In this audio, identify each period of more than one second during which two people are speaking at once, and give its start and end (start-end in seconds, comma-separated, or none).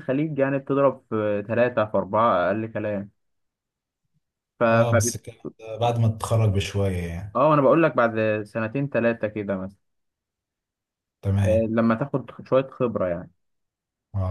none